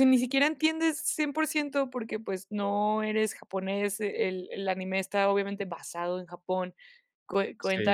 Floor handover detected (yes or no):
no